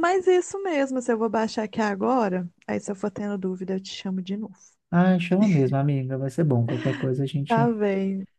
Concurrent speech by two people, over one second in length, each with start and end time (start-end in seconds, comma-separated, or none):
none